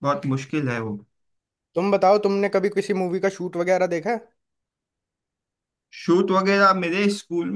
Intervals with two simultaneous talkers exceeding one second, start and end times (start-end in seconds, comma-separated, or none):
none